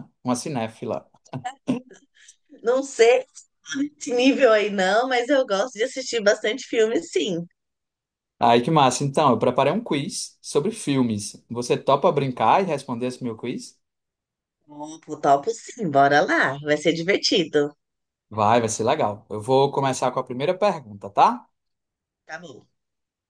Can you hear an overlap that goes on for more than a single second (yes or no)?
no